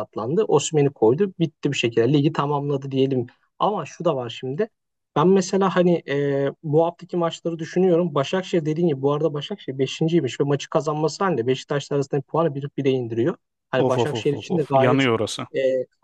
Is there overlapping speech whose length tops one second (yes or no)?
yes